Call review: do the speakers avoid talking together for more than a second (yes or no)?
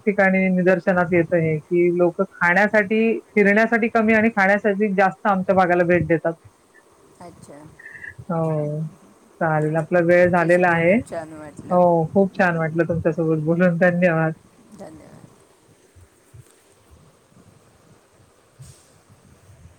no